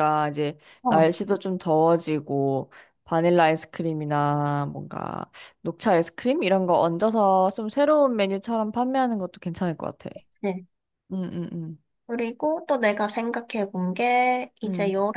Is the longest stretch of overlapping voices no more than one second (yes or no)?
yes